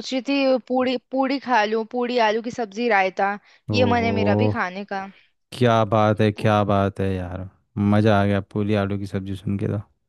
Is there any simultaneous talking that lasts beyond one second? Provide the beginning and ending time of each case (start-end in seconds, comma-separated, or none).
none